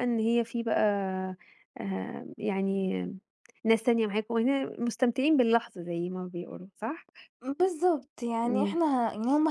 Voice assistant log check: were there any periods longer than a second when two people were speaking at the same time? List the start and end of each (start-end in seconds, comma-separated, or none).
none